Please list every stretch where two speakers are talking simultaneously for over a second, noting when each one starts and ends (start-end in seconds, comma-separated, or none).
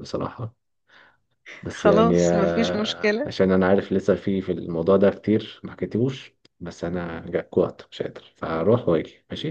1.7-3.3